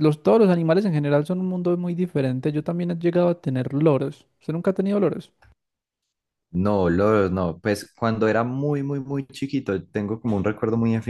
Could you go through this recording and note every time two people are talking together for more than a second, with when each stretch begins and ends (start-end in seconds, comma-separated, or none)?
none